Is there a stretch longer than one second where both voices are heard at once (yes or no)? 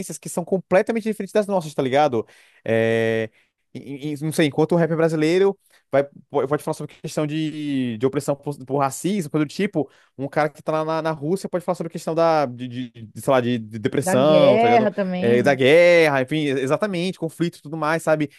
yes